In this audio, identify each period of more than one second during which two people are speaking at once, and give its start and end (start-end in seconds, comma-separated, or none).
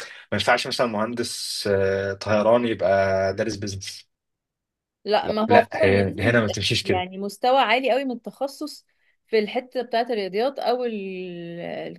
5.2-7.1